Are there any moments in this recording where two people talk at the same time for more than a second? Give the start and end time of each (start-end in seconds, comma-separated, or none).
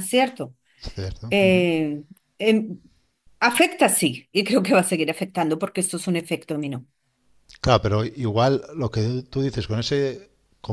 none